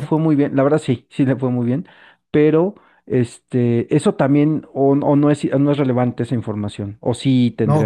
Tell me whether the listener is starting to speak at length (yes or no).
yes